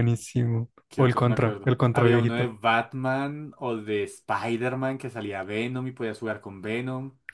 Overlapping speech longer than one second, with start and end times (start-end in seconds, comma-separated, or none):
0.9-2.5